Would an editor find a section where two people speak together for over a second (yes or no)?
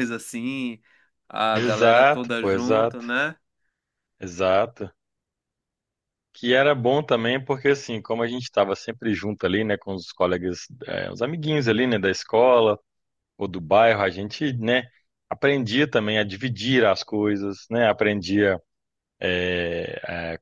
yes